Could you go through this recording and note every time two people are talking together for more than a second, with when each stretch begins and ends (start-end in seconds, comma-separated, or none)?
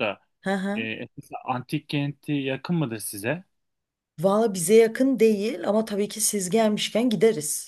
none